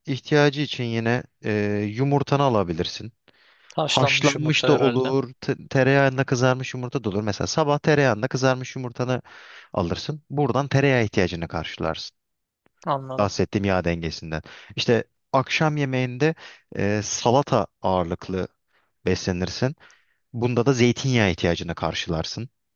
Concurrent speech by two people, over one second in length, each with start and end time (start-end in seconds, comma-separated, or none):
3.8-5.1